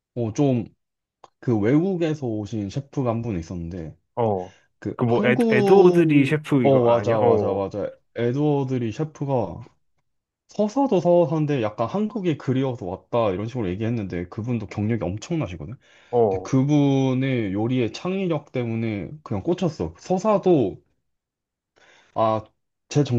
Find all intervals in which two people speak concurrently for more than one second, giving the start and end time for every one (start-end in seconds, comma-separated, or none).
5.0-7.6